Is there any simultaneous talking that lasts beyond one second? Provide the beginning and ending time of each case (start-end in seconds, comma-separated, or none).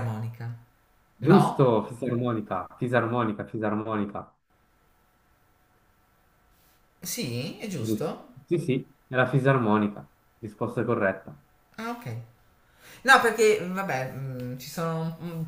none